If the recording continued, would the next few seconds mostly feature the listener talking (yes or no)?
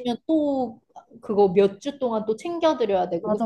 yes